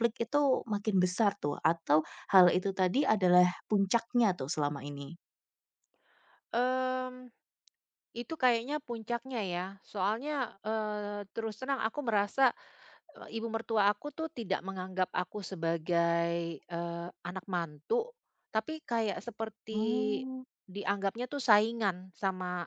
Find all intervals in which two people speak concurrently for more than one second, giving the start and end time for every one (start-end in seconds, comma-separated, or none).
none